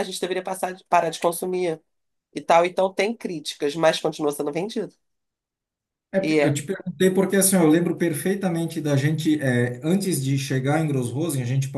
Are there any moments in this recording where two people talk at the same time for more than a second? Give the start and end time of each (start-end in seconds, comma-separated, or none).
none